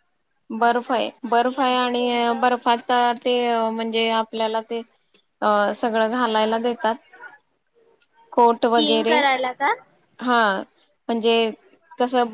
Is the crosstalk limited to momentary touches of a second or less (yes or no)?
no